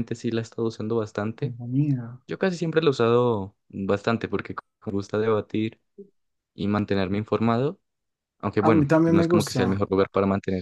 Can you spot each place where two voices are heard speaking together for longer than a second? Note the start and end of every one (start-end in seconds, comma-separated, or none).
8.6-9.8